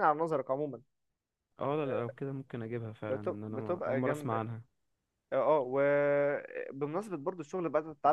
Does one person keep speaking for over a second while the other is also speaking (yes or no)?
yes